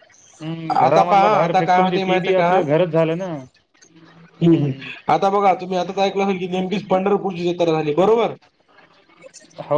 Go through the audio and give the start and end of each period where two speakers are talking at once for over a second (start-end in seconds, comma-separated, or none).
0.8-2.6